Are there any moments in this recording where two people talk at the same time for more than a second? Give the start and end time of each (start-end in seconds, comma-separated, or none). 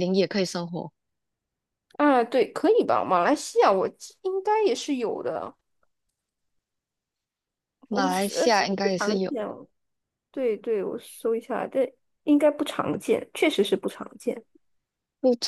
7.9-9.3